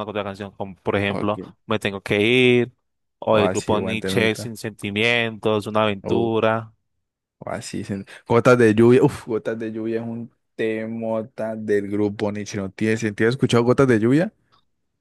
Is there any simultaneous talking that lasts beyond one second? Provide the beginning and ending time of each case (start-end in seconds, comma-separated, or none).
3.3-4.5